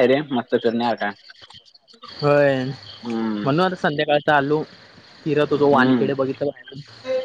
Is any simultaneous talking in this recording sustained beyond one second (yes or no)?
no